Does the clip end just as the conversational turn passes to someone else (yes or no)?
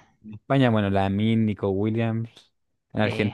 no